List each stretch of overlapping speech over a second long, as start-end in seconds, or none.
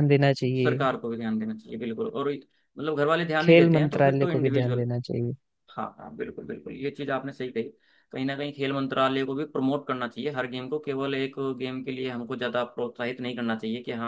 3.4-4.8